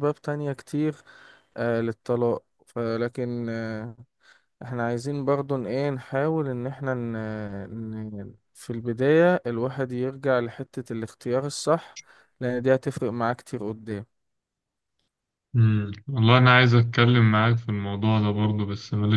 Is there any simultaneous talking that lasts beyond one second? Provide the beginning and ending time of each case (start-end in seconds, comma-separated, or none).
none